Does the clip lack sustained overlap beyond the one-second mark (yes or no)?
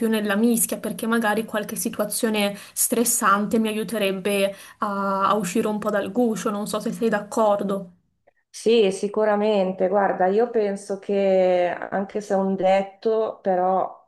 yes